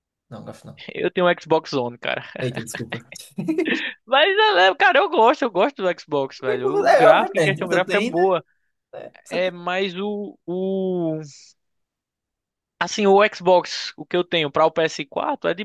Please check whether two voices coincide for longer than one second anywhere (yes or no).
yes